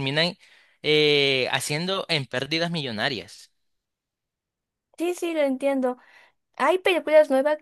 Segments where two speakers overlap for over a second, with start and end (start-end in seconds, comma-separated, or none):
none